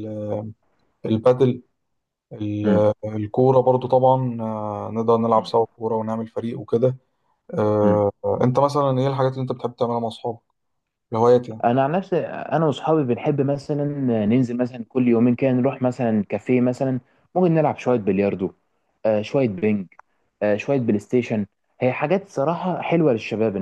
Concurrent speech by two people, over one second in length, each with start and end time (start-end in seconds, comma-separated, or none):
none